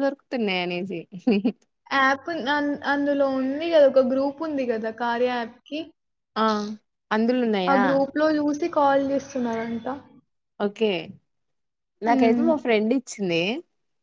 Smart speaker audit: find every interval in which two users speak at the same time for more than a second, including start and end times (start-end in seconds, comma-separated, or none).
none